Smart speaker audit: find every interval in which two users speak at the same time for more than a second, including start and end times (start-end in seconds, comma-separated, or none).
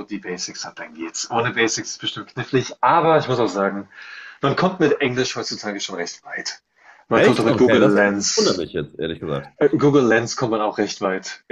7.1-8.7